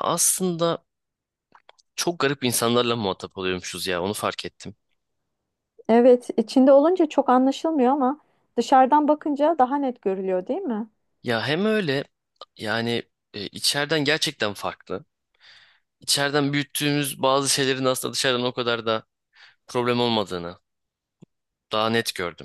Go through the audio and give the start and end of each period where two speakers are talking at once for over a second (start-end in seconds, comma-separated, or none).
none